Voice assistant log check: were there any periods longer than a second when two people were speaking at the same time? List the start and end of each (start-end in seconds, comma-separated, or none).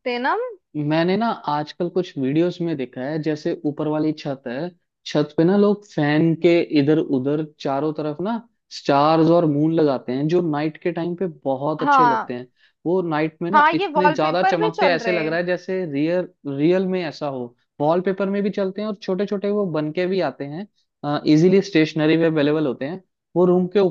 13.5-15.3